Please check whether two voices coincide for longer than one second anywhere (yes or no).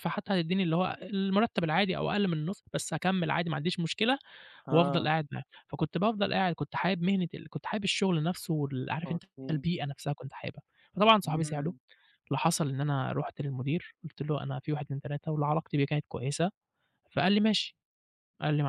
no